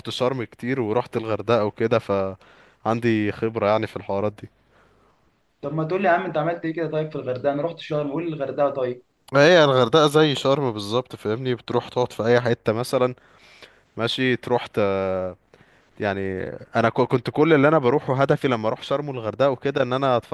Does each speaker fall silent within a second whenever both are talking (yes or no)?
yes